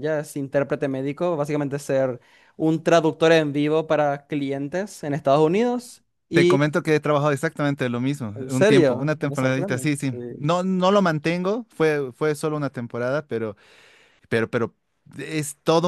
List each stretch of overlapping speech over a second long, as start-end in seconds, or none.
8.3-10.5